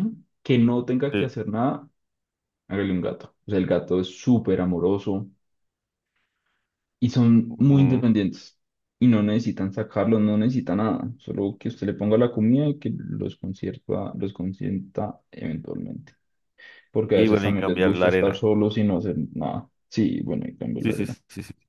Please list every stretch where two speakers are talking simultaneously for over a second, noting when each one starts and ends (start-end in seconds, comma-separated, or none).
17.1-18.4